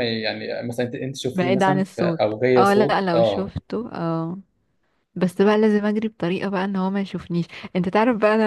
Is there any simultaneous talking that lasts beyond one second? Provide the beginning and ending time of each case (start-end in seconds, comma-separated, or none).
1.3-3.5